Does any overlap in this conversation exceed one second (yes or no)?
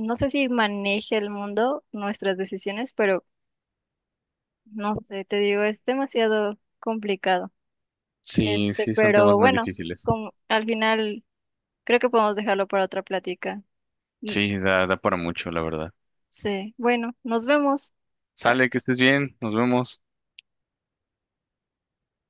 yes